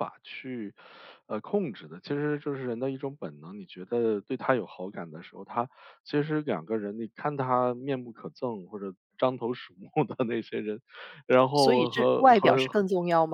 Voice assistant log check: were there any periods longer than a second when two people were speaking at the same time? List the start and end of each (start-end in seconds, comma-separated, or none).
11.5-12.8